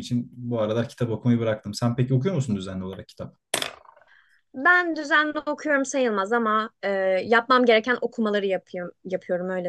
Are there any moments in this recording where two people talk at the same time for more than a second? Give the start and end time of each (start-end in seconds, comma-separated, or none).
none